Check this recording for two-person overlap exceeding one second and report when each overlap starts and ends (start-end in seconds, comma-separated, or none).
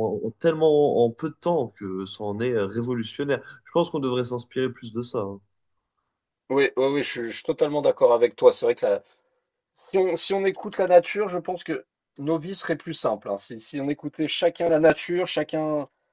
none